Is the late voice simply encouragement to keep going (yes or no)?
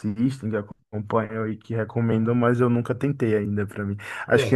yes